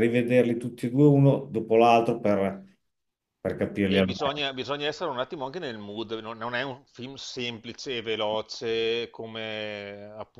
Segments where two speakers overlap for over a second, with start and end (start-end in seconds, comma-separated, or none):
none